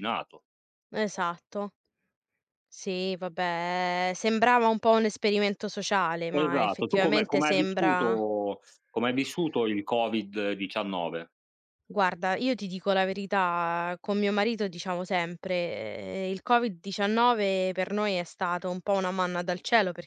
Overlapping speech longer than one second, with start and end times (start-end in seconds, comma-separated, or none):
6.3-8.2